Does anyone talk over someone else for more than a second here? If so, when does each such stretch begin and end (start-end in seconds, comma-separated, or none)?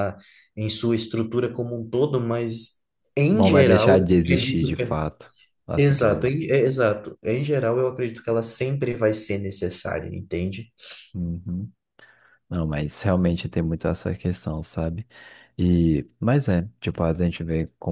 3.3-5.0